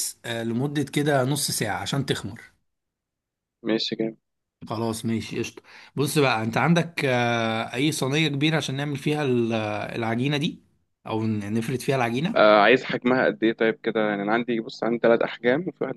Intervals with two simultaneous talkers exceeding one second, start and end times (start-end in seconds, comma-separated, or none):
none